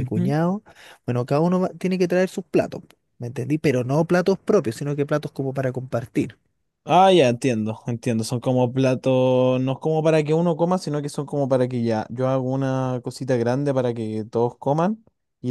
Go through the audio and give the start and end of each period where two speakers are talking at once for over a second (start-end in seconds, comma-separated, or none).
none